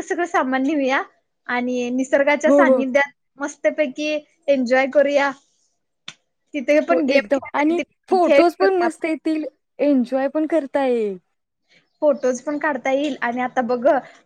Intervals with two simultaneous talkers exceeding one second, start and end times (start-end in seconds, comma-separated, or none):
6.9-9.1